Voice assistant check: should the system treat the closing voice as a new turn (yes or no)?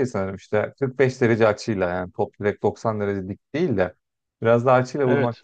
no